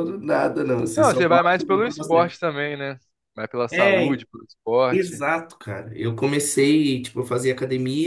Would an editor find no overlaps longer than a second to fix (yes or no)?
no